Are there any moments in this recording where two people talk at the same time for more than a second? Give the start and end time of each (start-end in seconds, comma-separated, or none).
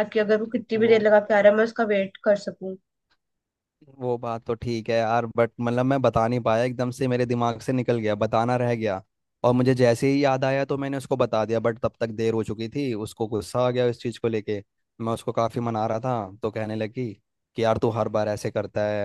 none